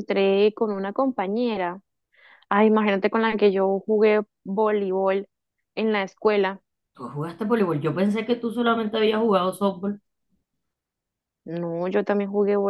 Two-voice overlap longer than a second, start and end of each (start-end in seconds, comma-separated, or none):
none